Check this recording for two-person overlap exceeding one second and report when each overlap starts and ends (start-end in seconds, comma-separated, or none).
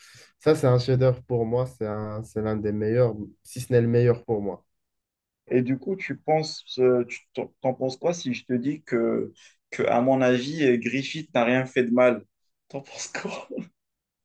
none